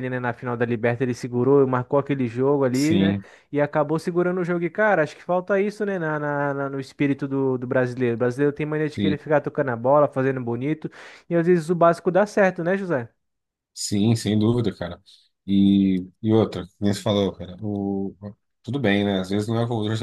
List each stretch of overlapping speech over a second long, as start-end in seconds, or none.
none